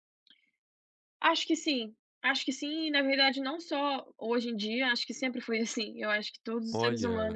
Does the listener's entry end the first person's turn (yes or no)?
no